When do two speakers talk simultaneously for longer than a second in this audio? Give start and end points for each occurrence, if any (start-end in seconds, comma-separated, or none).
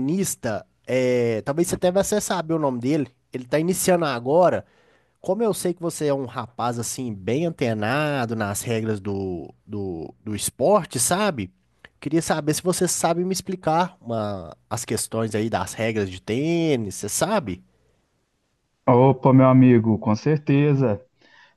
none